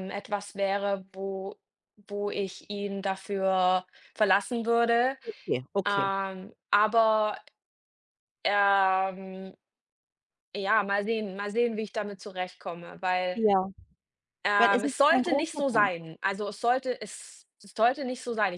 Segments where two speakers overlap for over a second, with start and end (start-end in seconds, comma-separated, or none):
14.6-16.0